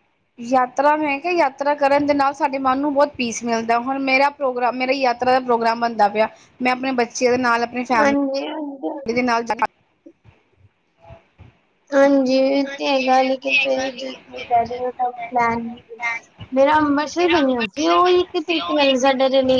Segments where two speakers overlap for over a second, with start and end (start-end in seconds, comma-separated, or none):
none